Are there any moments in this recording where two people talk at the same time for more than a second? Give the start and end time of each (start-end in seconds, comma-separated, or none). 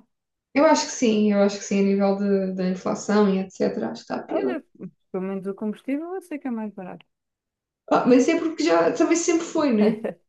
none